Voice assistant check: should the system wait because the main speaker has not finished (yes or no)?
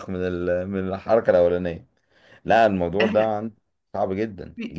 no